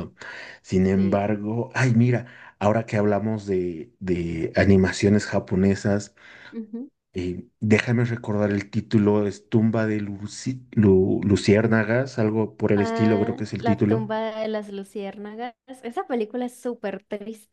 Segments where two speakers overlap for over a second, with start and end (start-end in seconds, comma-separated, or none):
12.8-14.1